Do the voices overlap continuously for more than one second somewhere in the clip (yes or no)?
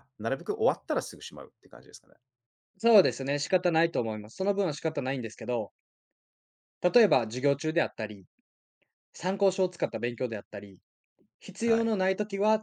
no